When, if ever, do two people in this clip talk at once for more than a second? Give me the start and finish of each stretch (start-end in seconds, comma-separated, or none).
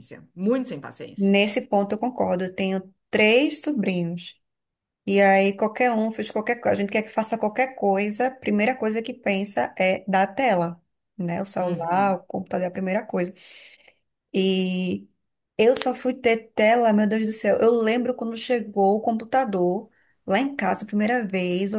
none